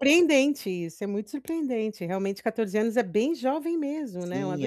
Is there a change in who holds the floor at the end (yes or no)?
yes